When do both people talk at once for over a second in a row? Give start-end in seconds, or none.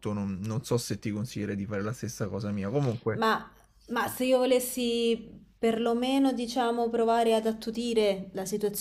none